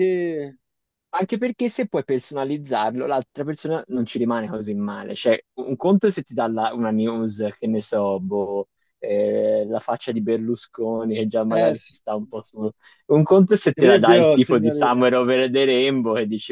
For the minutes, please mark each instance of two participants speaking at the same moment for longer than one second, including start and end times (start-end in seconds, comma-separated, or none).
13.8-15.0